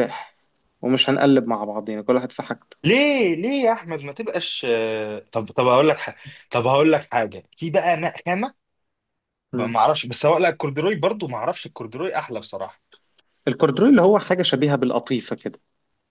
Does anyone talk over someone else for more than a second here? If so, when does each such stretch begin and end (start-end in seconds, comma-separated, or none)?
none